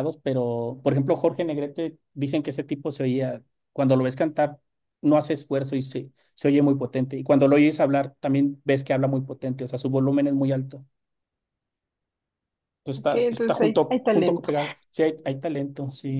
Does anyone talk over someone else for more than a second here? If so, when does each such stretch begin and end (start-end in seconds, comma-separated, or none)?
13.0-14.5